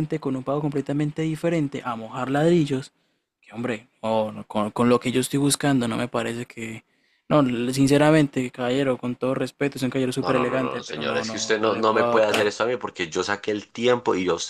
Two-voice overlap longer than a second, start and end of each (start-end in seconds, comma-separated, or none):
10.2-12.6